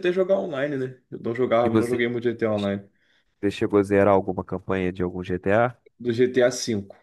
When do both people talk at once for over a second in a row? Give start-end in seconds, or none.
none